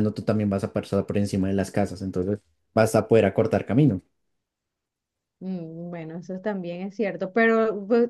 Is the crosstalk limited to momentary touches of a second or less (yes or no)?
yes